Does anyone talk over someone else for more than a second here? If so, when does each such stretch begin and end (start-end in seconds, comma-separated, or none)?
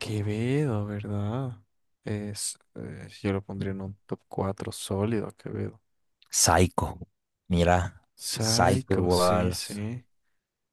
8.2-9.6